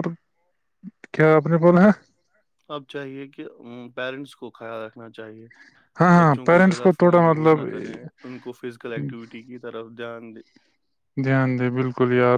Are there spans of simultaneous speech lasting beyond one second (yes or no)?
yes